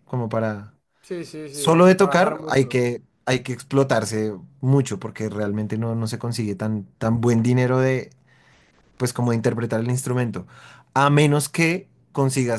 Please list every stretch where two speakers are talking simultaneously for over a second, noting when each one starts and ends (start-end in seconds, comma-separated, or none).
1.5-2.8